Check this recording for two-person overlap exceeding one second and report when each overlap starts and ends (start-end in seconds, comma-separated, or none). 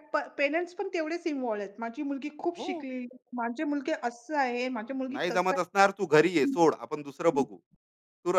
5.1-6.5